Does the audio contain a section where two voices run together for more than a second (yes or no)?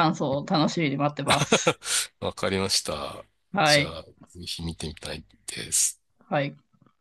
no